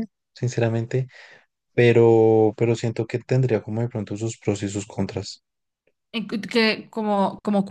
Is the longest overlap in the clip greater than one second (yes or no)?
no